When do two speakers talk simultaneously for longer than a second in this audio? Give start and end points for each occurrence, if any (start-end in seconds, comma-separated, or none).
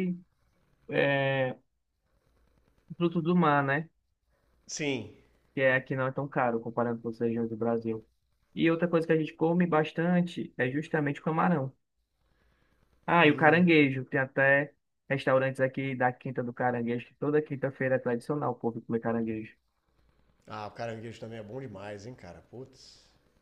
none